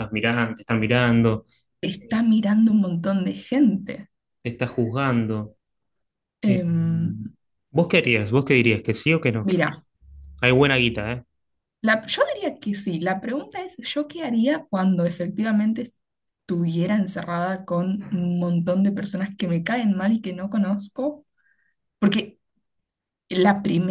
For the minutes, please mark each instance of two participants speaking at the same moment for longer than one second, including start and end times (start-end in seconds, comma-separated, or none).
none